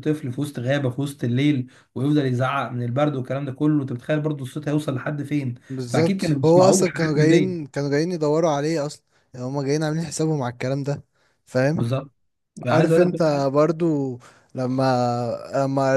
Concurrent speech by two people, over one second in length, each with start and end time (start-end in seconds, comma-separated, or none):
5.7-7.5